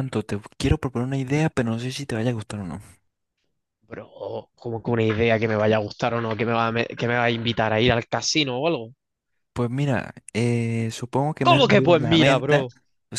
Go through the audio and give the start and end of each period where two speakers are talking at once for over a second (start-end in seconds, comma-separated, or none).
11.4-12.7